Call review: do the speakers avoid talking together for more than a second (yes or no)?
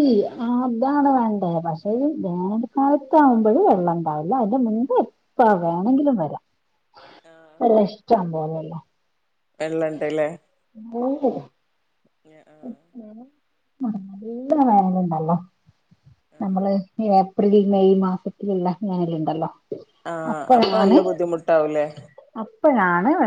yes